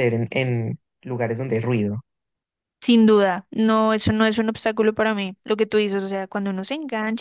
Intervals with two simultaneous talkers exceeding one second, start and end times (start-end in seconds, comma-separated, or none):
none